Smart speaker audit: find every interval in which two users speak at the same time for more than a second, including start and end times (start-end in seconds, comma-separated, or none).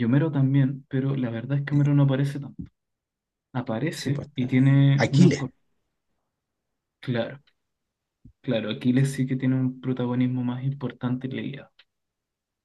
3.9-5.4